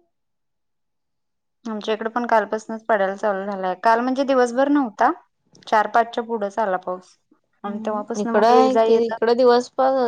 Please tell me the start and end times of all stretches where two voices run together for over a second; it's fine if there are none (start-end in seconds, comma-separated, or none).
7.7-9.2